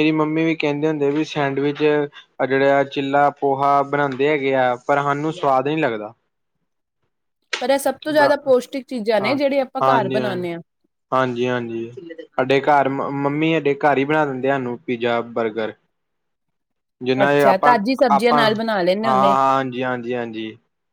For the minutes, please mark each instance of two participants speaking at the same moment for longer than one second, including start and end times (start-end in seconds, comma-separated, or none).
17.2-19.4